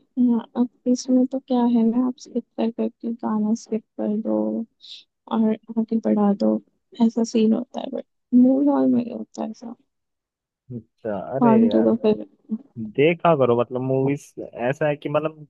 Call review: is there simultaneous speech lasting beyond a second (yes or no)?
no